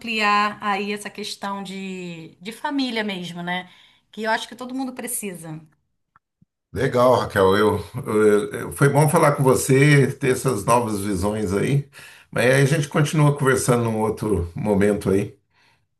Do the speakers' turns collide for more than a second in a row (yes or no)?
no